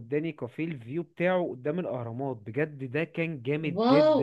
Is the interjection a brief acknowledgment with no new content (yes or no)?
no